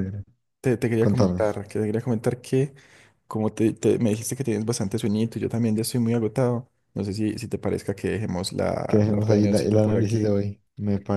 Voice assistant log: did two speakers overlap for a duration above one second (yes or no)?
yes